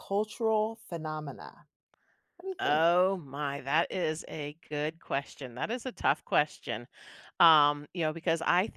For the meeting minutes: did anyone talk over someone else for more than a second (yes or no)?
no